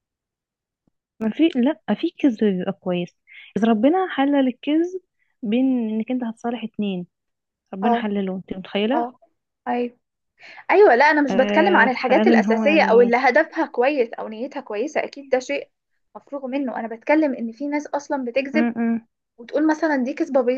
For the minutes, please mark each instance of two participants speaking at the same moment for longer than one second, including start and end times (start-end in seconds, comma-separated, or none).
11.3-13.2